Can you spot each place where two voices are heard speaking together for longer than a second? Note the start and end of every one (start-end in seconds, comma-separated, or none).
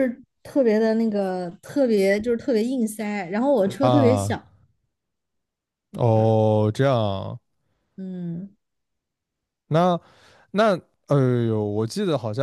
none